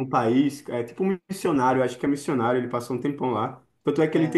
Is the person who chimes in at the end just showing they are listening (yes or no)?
yes